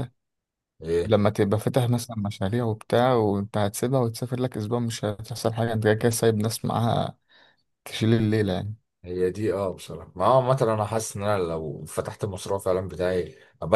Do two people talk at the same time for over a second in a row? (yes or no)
no